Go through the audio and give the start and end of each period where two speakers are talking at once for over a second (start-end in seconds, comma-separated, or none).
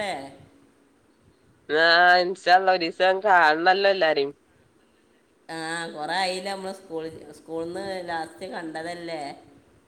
none